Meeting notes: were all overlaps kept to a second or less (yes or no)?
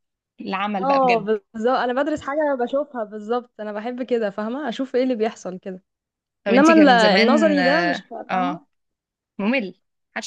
no